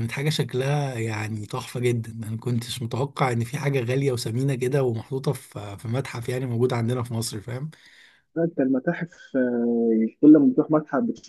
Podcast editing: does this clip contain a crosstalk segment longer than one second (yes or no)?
no